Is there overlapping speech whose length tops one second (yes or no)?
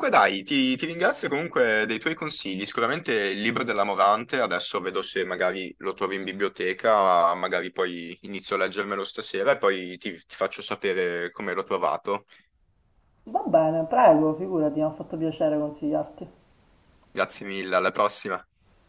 no